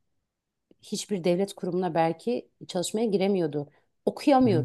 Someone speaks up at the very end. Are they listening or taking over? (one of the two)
listening